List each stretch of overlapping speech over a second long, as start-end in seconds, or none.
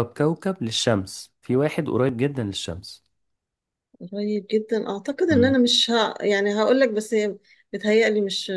none